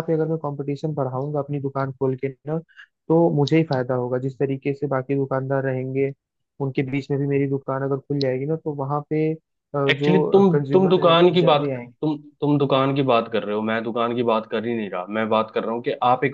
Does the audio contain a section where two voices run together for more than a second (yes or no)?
yes